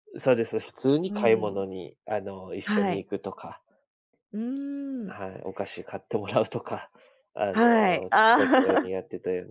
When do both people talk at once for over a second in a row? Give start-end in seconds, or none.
7.5-8.9